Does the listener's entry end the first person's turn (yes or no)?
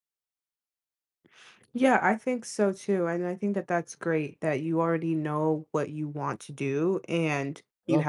no